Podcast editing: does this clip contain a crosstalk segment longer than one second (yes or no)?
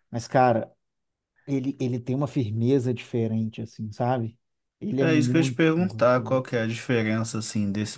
yes